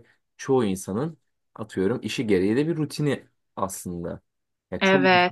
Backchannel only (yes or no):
yes